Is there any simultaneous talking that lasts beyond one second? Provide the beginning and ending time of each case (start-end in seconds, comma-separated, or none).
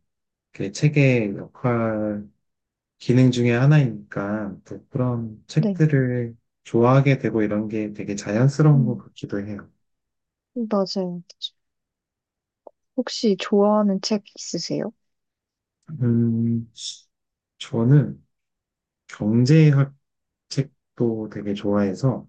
none